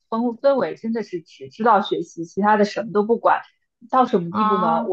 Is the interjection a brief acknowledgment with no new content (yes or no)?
yes